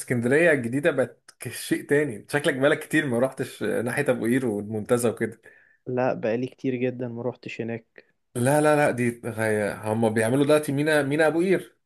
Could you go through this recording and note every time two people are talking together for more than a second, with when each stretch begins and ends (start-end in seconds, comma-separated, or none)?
none